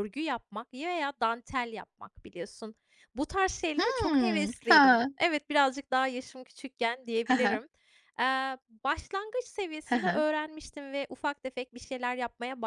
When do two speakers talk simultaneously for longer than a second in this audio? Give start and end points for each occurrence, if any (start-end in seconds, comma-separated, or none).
3.8-5.1